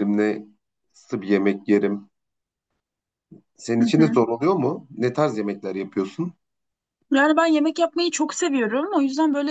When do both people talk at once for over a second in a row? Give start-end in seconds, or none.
none